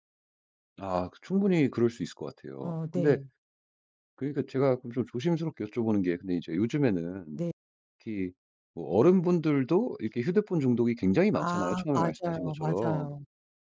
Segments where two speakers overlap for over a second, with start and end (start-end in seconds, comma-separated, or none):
11.4-13.1